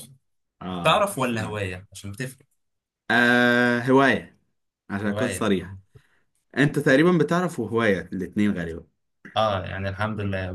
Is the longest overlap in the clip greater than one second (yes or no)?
no